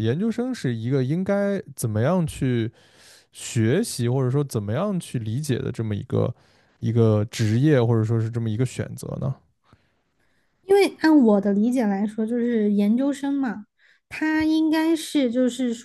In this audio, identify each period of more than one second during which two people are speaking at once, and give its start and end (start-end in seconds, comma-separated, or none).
none